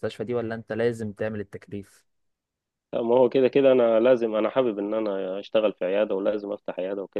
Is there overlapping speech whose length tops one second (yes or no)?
no